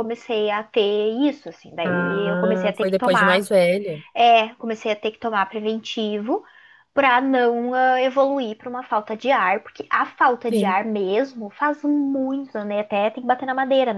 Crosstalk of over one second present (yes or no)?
yes